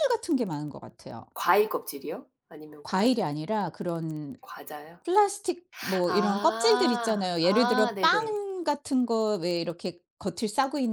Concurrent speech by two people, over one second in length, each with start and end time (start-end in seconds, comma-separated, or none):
6.1-8.4